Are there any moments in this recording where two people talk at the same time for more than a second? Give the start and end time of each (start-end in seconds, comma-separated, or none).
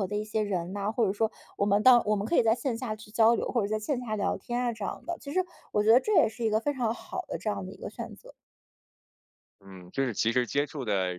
none